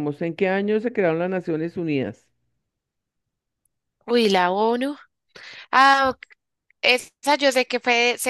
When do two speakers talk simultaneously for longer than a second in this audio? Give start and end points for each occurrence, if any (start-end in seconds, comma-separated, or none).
none